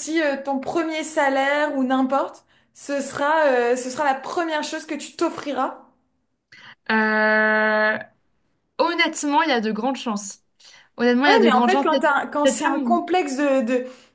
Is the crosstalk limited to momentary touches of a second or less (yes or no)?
no